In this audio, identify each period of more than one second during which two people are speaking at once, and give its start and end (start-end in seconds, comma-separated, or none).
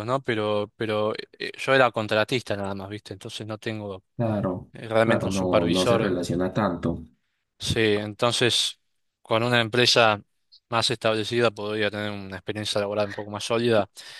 4.7-6.2